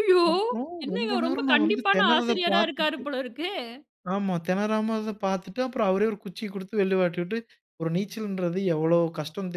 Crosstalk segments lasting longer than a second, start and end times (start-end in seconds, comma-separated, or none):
0.8-3.0